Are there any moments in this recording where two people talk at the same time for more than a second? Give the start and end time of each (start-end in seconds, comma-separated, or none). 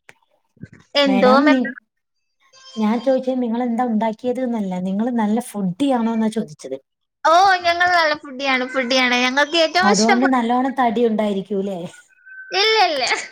none